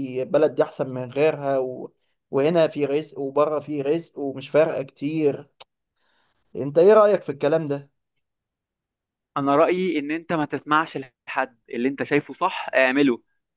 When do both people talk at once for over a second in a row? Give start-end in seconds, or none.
none